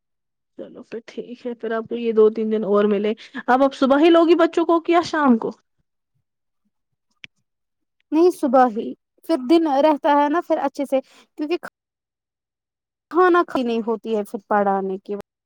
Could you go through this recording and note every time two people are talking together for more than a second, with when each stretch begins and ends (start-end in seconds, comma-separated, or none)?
none